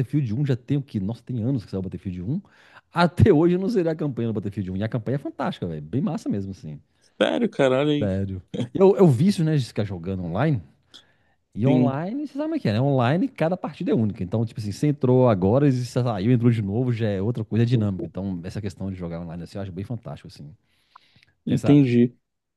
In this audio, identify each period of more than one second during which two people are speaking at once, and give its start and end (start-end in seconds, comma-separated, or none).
none